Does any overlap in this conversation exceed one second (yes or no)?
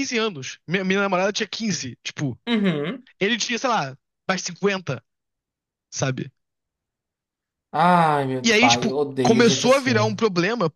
yes